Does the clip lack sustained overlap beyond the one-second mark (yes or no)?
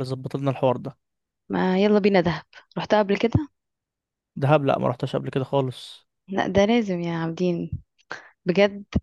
yes